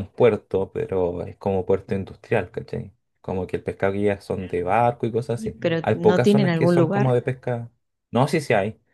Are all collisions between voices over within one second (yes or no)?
no